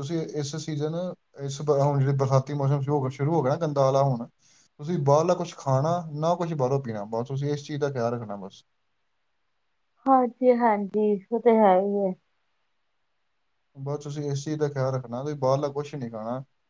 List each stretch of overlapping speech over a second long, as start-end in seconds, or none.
none